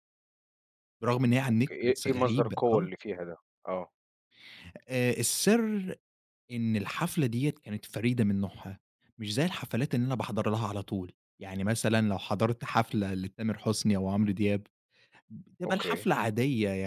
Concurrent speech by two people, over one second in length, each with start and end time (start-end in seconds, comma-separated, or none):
1.5-2.9